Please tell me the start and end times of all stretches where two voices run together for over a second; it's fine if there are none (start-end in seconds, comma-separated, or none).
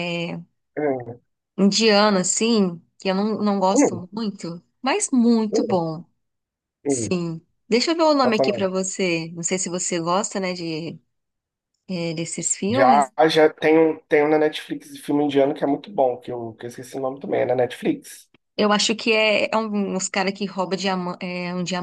none